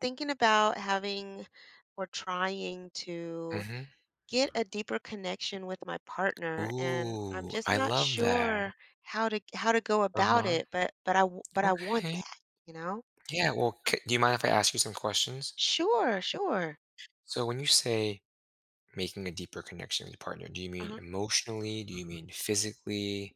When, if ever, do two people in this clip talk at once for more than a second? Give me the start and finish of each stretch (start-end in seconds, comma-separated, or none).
6.6-8.7